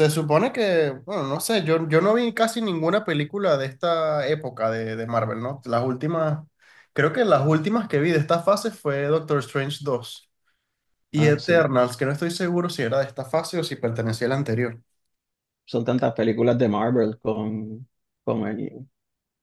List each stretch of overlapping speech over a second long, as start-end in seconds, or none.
none